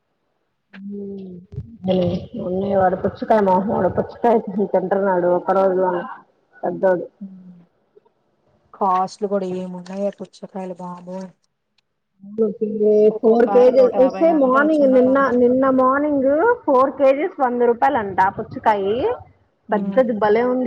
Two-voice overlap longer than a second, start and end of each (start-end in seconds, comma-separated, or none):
13.1-15.2